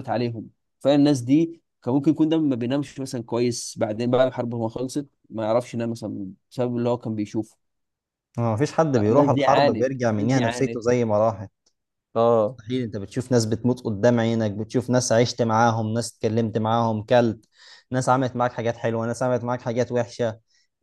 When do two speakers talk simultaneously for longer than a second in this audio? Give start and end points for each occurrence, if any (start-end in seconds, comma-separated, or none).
8.9-10.8